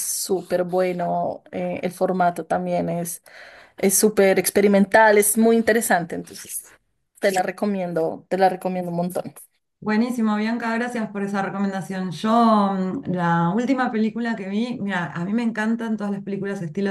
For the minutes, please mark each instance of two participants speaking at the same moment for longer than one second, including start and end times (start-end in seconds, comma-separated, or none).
none